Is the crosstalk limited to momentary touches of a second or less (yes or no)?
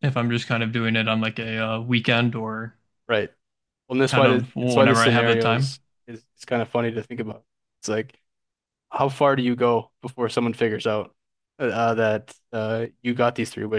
no